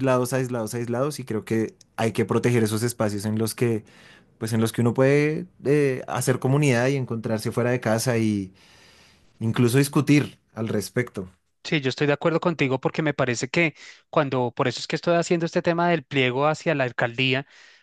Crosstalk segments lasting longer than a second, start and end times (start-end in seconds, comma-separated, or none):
none